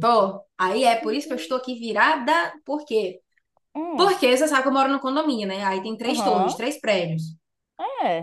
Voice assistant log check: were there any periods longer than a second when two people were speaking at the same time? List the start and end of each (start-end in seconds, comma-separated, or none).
none